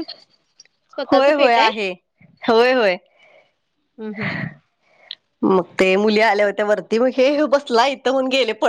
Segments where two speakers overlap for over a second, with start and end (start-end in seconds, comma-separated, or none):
none